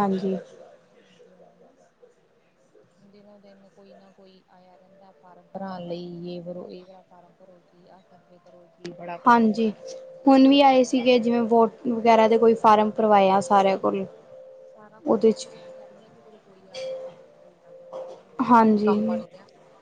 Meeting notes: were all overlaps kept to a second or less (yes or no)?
yes